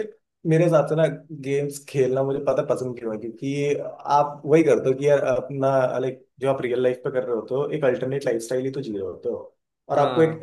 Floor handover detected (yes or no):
no